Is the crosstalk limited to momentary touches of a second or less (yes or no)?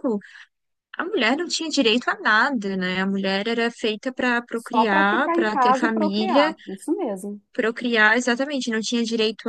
no